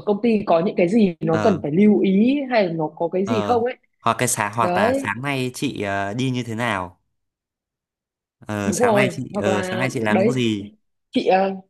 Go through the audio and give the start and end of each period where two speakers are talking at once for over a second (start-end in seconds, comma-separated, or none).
8.6-10.3